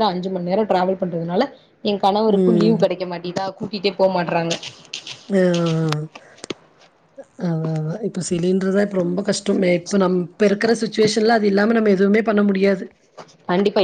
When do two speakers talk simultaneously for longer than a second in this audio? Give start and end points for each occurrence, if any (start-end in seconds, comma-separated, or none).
none